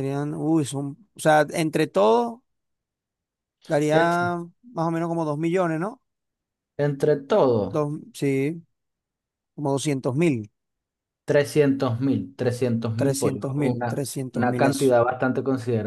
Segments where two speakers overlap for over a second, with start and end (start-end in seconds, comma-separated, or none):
12.9-14.6